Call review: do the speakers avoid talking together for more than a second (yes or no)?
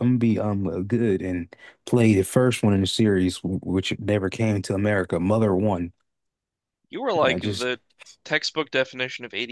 yes